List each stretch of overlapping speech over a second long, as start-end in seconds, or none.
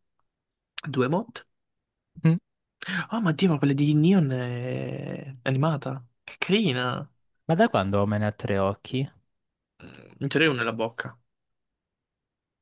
none